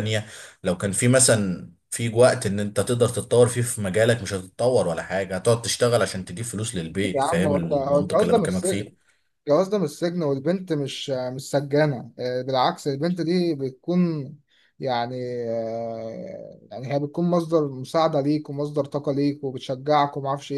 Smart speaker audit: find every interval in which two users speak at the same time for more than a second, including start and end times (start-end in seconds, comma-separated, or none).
7.1-8.9